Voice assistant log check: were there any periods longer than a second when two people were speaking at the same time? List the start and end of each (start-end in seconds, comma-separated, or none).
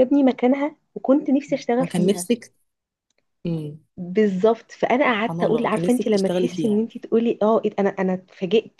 5.1-6.8